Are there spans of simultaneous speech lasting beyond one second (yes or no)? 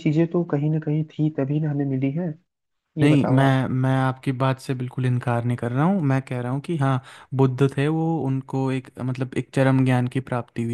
no